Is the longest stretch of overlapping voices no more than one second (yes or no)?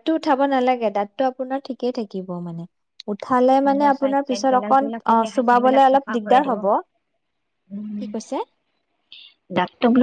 no